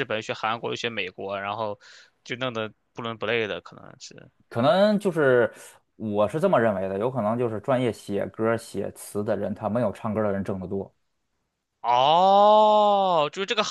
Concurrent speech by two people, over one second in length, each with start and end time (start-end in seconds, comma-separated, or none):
none